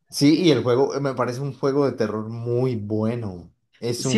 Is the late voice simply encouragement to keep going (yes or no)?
no